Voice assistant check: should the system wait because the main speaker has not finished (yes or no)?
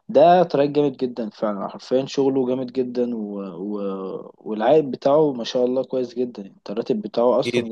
no